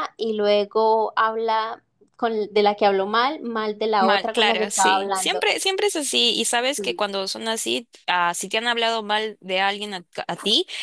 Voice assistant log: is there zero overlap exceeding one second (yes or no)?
no